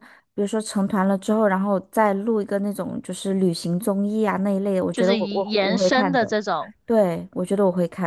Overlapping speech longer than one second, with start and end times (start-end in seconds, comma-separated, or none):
4.9-6.3